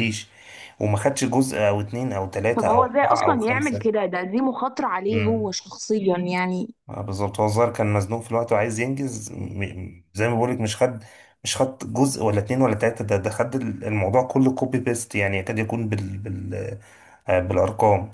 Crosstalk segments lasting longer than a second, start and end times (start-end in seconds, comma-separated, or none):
2.6-3.9